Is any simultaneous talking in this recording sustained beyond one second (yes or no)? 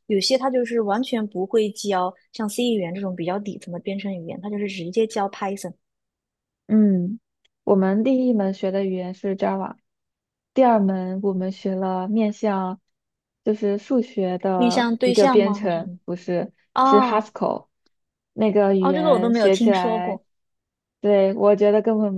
yes